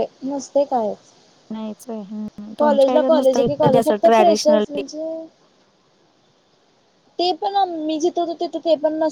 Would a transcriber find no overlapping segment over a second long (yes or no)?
no